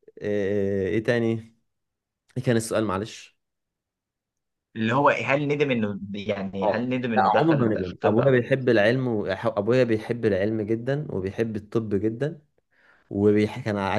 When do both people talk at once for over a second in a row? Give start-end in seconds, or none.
6.6-8.5